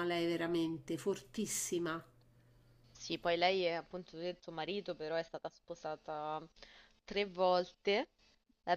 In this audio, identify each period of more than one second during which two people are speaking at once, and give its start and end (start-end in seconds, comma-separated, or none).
none